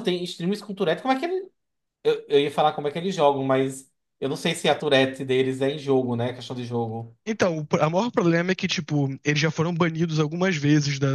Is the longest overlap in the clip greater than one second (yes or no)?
no